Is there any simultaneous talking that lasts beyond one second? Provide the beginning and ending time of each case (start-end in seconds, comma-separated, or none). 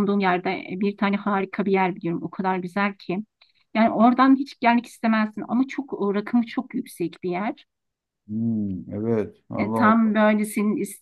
none